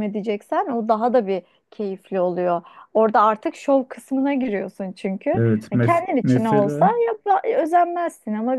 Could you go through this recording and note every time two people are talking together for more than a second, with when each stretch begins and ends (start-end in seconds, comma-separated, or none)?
5.3-6.9